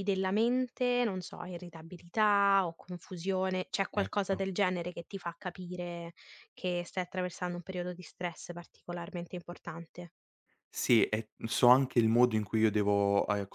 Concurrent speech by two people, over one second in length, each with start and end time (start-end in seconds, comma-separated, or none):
none